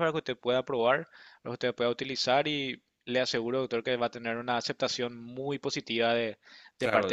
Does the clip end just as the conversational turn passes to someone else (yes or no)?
yes